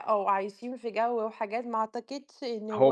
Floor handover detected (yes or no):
yes